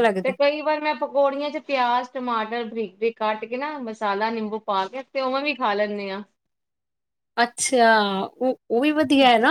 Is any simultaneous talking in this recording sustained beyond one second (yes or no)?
no